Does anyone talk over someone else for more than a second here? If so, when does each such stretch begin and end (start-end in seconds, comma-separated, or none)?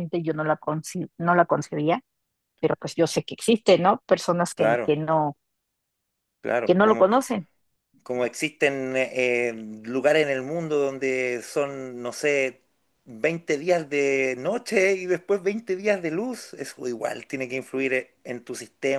none